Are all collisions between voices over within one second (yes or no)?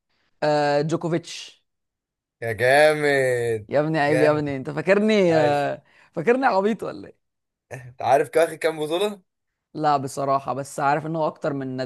yes